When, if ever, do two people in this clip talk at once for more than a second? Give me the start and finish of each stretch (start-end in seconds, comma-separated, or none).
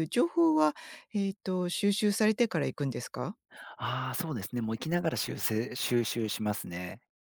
none